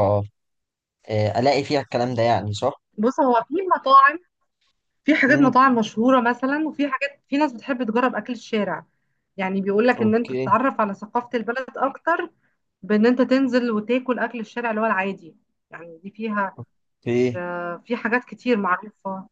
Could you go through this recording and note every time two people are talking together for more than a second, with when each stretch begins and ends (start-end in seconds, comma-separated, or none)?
none